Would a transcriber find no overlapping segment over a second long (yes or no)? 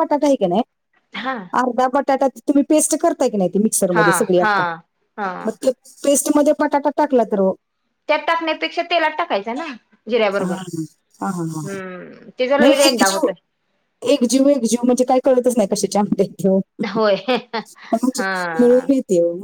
yes